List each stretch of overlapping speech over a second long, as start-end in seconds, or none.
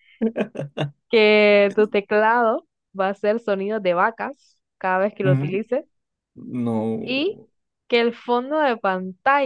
none